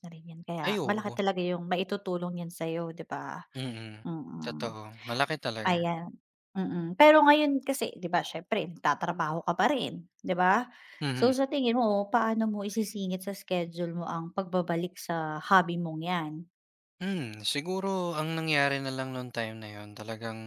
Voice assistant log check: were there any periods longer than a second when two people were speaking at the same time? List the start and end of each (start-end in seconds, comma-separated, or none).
none